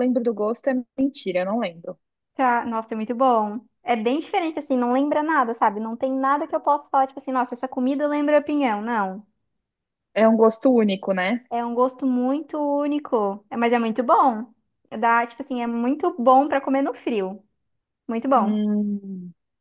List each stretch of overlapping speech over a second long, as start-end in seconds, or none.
none